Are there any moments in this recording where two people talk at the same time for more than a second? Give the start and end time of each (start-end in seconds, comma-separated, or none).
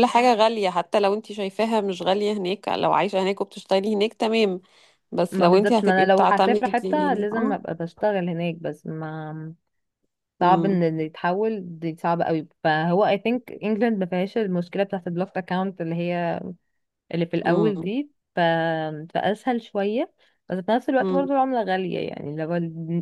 5.3-7.6